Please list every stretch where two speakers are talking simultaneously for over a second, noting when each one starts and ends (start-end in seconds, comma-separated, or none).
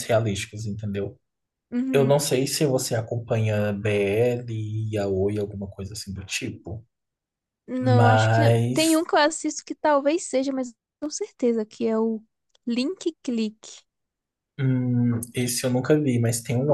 7.8-9.0